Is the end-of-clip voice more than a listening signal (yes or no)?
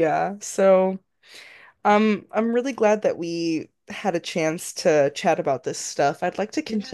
no